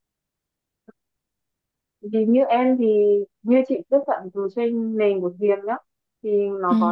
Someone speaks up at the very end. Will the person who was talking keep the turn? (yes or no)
yes